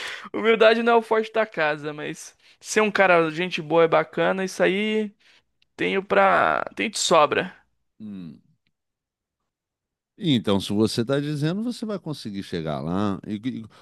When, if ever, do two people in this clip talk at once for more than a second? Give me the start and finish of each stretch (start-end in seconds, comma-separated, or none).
none